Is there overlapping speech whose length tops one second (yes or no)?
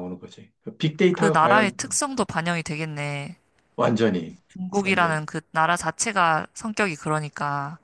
no